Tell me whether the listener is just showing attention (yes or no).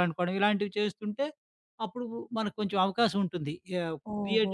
no